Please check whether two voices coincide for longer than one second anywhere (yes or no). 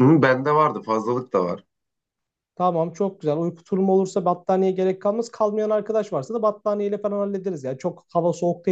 no